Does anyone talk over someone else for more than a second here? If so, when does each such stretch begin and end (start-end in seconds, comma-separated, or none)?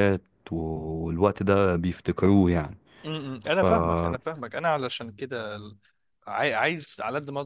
none